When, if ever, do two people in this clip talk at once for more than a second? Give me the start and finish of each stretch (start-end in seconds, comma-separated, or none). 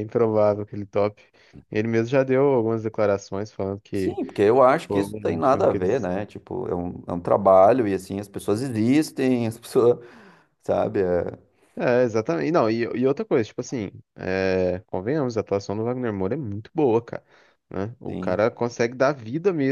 4.9-6.1